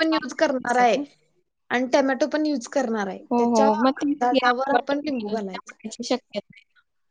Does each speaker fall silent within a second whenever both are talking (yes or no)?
no